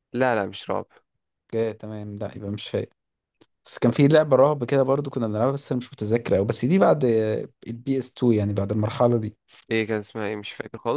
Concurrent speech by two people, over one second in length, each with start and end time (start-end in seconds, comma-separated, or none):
none